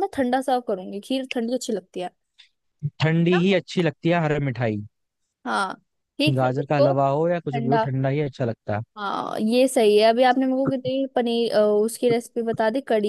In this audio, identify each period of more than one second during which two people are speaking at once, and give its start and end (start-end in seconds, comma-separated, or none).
6.3-7.8